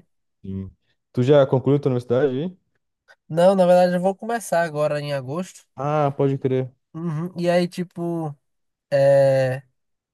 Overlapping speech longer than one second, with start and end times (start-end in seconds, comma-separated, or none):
none